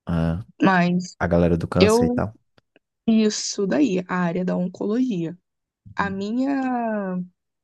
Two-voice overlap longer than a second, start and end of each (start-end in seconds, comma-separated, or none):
none